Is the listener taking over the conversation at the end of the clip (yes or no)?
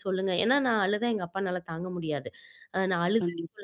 no